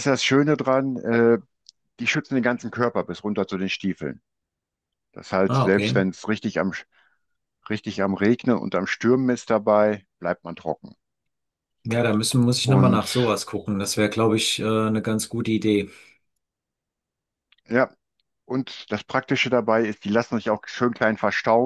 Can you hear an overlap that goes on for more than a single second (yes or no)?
no